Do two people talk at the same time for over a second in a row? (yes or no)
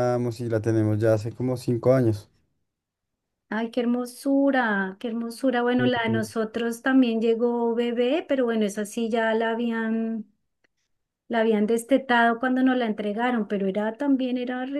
no